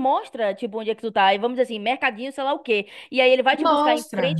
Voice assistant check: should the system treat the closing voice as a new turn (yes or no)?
no